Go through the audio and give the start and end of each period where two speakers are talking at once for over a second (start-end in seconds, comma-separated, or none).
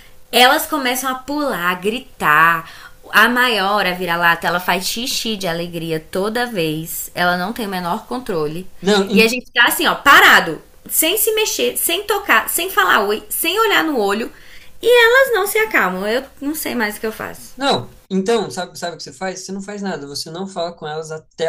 none